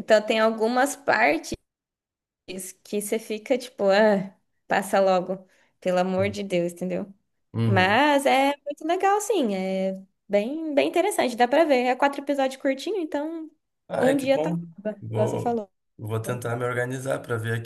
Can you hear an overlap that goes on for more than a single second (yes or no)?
yes